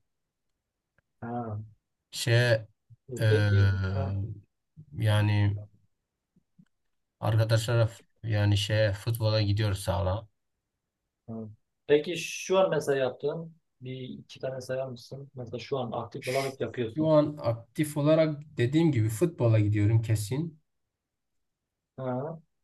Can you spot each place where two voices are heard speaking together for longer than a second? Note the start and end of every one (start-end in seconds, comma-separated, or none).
none